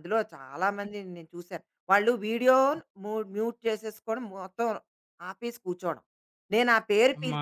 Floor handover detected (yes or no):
no